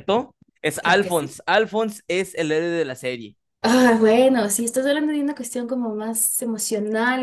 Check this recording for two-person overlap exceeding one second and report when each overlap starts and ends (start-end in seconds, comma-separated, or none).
none